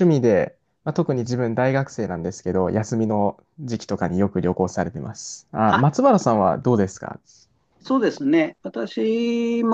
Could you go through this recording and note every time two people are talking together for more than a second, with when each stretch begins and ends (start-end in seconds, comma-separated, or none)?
none